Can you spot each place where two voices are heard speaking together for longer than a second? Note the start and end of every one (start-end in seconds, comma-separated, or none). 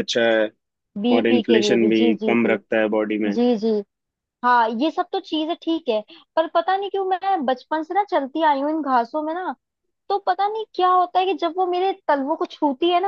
1.2-2.6